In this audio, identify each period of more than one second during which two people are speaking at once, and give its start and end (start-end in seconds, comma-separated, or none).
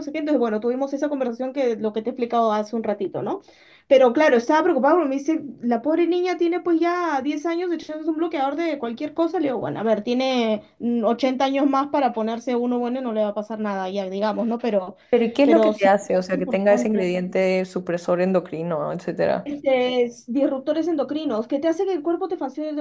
15.4-17.1